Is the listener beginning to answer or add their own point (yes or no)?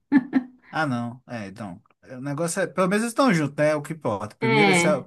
no